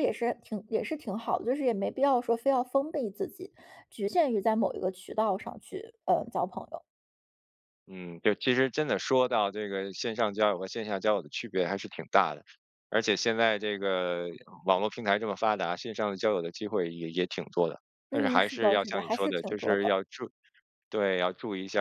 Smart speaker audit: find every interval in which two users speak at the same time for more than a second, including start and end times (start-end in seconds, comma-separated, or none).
18.1-20.0